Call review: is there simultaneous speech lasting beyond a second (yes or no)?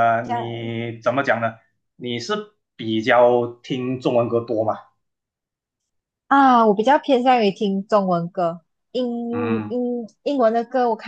no